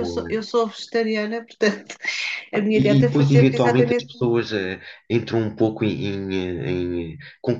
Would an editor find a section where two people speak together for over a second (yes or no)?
yes